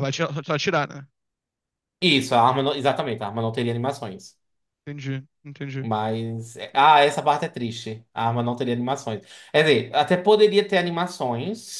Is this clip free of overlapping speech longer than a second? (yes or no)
yes